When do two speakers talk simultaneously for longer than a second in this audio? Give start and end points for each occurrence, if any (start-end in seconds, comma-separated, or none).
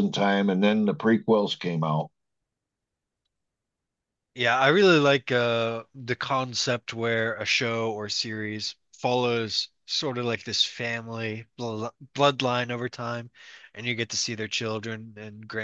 none